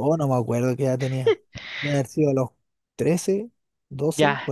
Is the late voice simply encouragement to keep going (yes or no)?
no